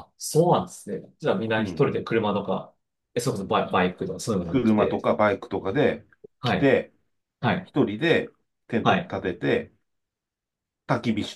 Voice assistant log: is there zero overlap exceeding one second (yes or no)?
yes